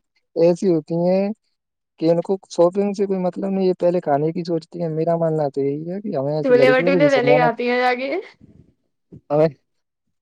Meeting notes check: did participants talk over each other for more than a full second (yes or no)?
yes